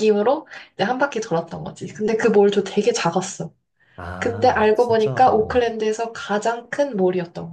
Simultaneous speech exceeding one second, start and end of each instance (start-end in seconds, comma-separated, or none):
4.2-5.7